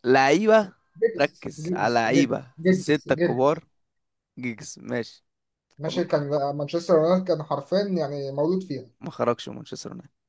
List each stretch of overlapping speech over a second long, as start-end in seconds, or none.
1.2-3.6